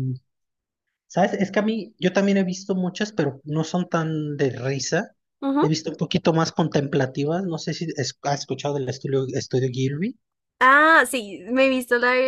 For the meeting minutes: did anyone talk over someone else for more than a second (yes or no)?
no